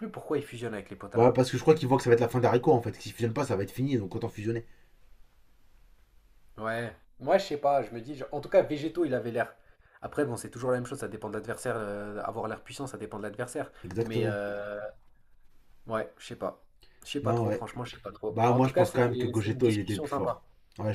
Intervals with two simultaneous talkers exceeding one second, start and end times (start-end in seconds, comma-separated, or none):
18.3-20.4